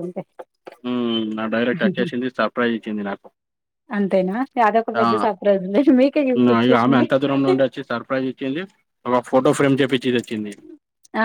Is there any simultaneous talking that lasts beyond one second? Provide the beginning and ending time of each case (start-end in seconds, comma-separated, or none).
5.0-7.0